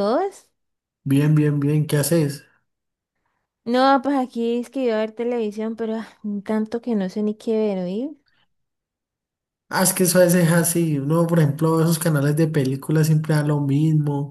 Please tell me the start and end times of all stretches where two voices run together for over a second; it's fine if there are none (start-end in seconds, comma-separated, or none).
none